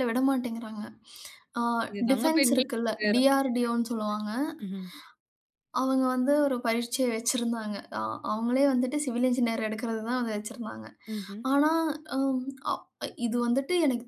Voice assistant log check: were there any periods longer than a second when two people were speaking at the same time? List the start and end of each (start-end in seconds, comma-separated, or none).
2.1-3.7